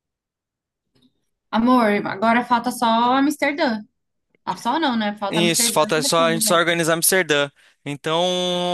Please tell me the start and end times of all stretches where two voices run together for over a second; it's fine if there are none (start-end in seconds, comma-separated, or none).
5.3-6.6